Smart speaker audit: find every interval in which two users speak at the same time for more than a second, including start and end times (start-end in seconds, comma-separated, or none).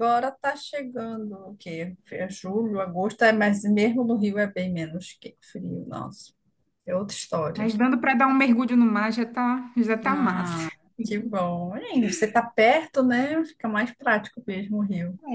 none